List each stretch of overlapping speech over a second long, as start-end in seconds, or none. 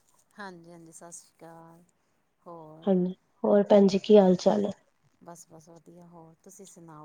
none